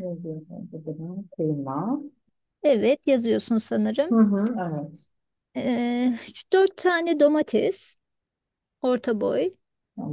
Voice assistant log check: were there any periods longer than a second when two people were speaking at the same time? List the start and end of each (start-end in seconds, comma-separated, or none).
none